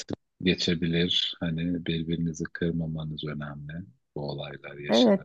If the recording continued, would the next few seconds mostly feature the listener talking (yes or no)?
yes